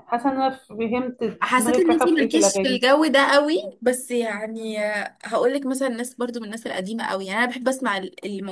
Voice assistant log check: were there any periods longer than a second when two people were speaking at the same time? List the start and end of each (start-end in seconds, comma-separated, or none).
1.4-2.8